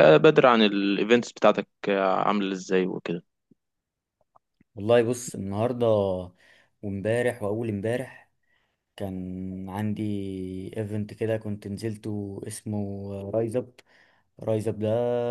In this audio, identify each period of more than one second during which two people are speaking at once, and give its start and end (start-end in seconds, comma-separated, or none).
none